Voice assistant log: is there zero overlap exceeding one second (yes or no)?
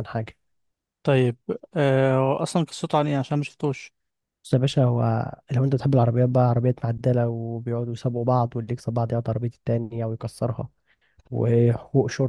yes